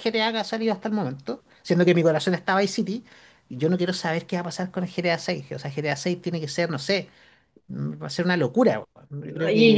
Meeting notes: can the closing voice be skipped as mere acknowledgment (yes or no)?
no